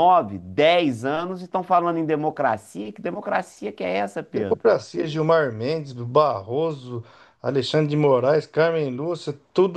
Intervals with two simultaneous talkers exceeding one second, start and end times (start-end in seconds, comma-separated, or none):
none